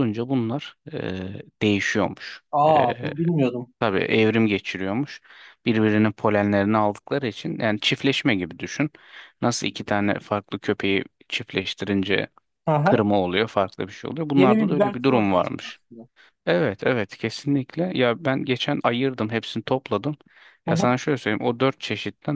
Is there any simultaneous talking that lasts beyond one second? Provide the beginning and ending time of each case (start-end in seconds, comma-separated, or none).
14.3-15.8